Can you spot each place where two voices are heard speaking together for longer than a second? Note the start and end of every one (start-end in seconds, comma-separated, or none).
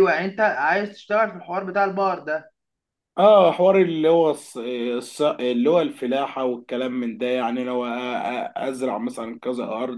none